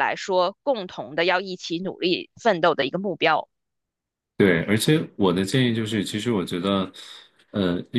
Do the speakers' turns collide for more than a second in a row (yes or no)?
no